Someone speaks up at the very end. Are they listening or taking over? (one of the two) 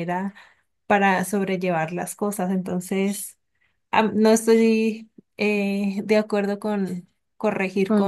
taking over